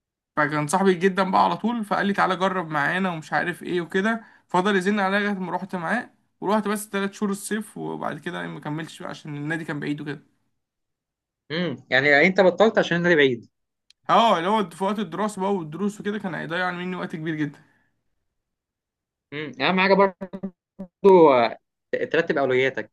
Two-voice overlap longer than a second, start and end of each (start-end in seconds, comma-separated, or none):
none